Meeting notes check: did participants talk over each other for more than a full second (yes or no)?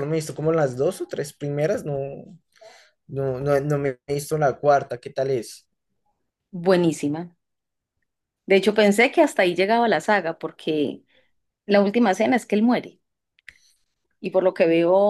no